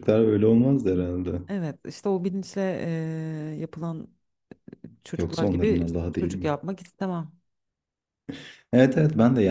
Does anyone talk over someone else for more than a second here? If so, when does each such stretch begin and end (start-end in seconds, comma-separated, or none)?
5.2-6.5